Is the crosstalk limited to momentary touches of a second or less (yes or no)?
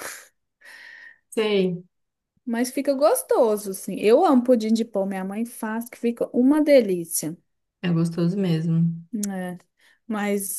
yes